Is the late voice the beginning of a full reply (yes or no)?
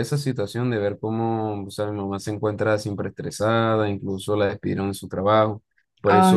no